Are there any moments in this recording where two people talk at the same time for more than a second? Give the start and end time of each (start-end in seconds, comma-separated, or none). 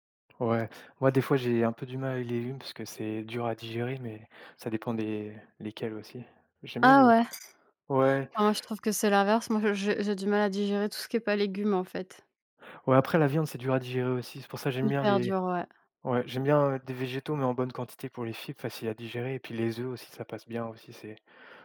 none